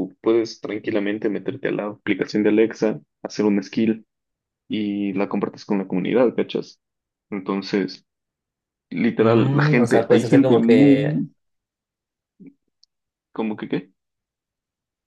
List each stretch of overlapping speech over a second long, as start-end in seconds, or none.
9.2-11.2